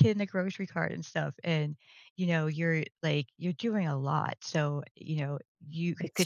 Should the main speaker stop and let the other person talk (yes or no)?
no